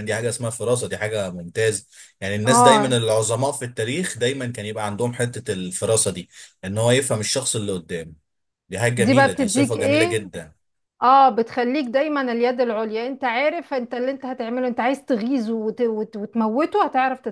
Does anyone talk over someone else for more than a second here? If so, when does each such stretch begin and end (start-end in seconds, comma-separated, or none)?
9.0-10.3